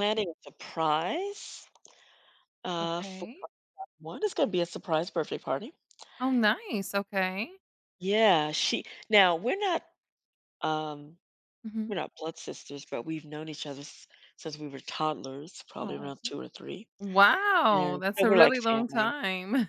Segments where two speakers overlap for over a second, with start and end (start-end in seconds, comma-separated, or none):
17.7-19.1